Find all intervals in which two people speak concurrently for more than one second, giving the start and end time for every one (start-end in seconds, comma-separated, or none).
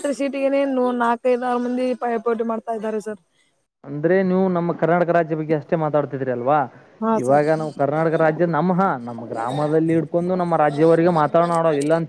none